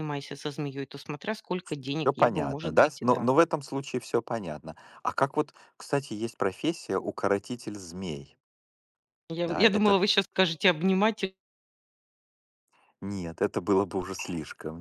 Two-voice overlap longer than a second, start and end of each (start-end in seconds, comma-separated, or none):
2.0-3.3